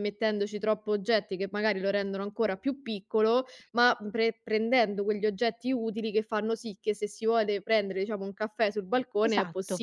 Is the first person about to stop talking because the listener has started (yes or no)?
yes